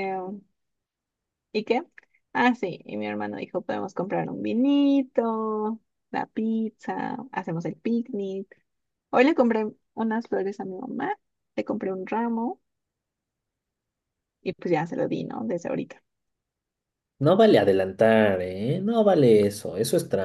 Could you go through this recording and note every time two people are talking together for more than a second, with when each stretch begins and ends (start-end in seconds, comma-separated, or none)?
none